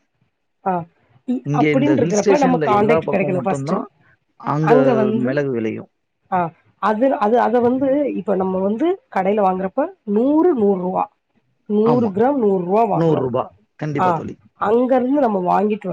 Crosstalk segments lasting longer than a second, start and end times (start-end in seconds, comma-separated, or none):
1.5-3.8